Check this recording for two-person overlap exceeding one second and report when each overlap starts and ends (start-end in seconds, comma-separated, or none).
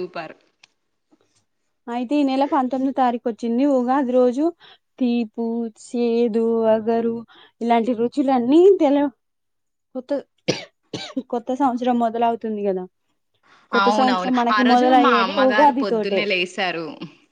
13.8-16.2